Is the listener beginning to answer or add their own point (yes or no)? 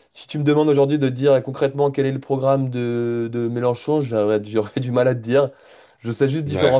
no